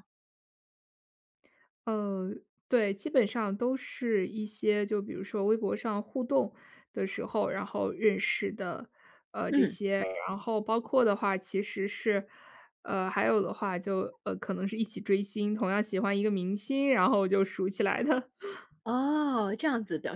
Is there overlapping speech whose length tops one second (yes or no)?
no